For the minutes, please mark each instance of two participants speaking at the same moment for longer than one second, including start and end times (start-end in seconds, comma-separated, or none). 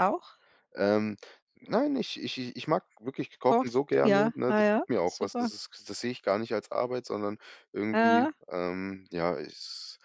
3.4-5.5